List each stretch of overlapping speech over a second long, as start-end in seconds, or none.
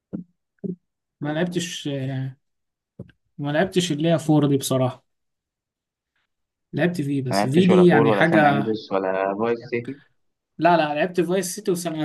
7.3-8.6